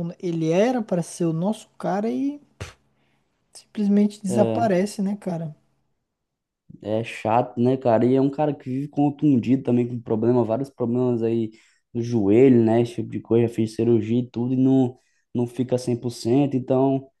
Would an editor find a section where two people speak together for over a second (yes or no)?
no